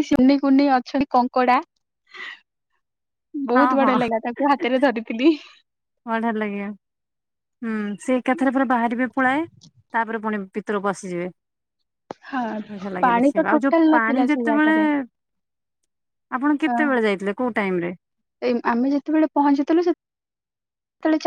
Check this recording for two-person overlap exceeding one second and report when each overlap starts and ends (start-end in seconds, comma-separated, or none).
13.1-14.7